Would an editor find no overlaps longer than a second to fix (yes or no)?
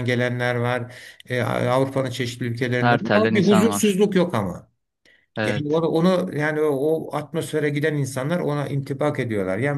no